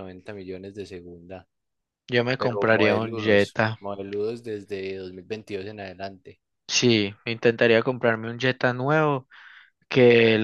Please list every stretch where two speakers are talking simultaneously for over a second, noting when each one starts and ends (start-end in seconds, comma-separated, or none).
2.4-3.8